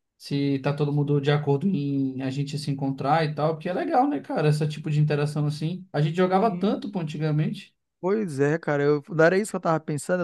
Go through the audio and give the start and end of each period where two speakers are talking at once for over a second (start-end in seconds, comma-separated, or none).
none